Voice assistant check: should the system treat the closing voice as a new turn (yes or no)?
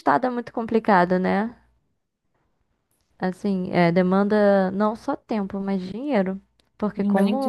yes